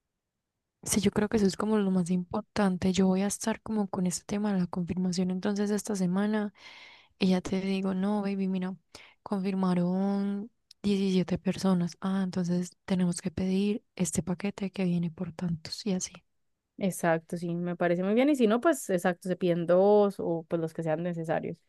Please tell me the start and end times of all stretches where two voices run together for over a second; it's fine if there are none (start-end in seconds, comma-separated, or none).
none